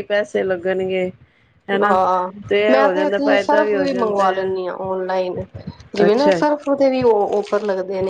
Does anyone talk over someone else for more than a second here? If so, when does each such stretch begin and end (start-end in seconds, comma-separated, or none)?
3.2-4.7